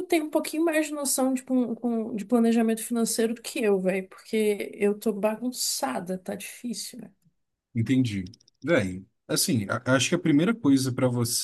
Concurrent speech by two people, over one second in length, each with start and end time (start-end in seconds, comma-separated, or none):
none